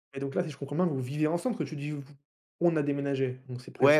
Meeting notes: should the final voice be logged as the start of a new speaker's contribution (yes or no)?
yes